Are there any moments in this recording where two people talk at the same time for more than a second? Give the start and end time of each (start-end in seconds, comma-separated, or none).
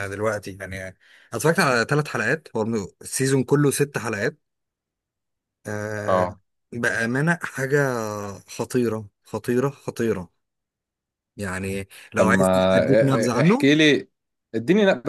12.2-13.7